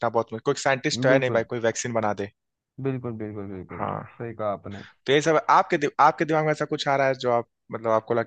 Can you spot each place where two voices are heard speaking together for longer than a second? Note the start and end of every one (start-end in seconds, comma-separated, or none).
none